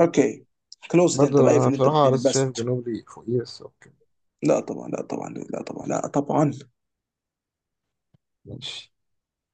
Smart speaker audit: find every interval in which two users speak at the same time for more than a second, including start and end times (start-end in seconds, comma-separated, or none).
1.1-2.7